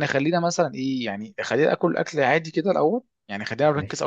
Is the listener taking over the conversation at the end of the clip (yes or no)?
no